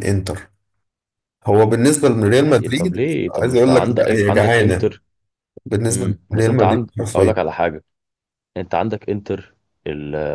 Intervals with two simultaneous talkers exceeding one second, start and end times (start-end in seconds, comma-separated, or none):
2.4-4.9, 5.9-7.4